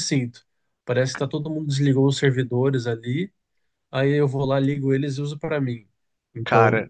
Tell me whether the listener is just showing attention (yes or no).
yes